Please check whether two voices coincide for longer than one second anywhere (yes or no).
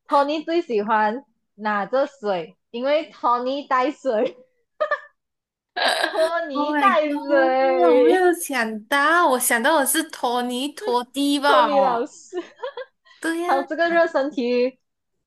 yes